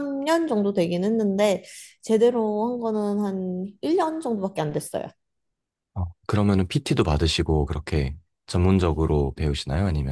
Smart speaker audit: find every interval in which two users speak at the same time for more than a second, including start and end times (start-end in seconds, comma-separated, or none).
none